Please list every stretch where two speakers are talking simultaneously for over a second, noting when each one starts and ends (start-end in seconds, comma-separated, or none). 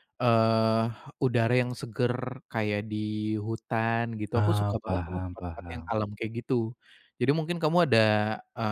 4.4-5.9